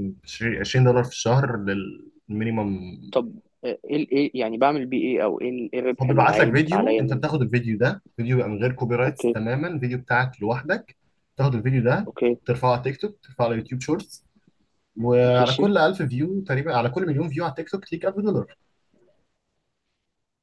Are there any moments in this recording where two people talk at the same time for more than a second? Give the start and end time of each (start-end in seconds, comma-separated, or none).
6.0-7.2